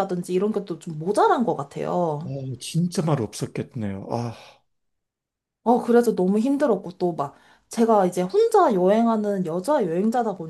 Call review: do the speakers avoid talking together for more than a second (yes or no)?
yes